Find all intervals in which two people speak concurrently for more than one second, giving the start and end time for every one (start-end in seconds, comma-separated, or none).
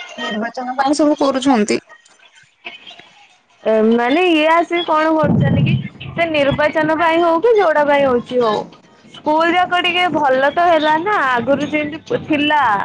none